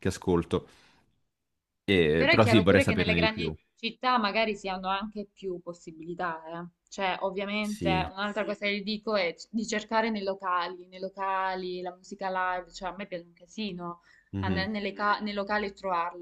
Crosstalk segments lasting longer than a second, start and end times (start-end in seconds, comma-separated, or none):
2.1-3.5